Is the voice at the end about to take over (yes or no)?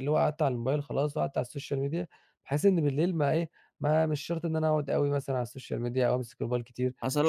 yes